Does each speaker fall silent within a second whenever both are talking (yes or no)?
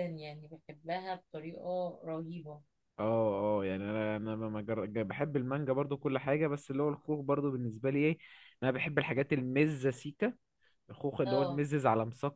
yes